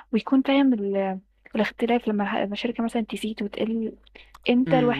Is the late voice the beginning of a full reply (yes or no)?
yes